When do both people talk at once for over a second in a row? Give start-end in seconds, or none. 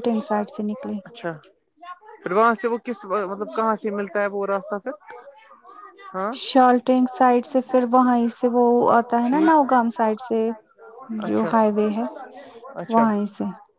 none